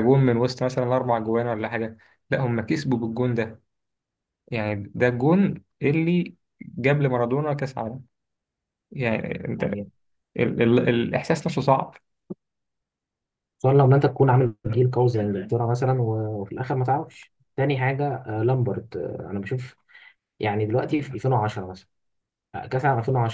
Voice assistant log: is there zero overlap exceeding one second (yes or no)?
yes